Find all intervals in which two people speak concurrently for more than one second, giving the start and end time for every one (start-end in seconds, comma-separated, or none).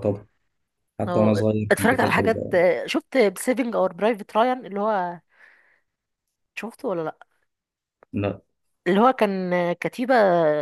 1.1-2.5